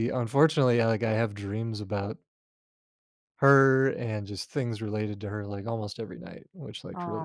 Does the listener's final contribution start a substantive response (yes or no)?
yes